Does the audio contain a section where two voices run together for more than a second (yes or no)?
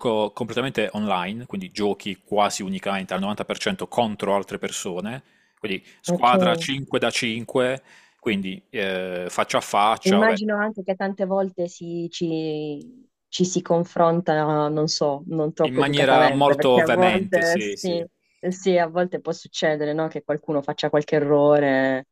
yes